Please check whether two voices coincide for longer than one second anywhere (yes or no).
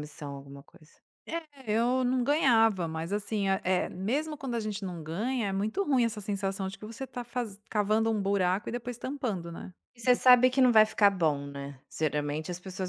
no